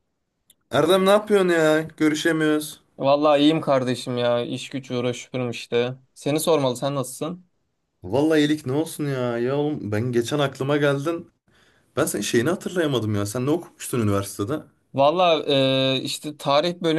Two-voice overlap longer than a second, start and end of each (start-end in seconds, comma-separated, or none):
none